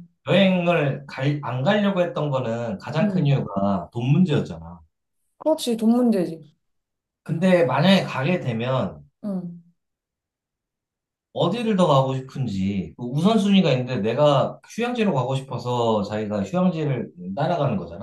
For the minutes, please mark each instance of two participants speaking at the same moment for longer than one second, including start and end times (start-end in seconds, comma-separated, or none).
none